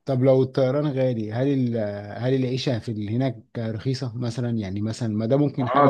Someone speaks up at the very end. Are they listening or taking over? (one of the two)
taking over